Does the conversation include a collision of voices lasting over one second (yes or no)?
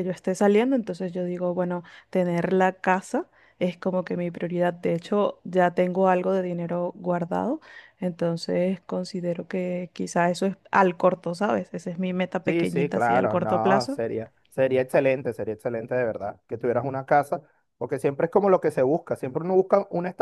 yes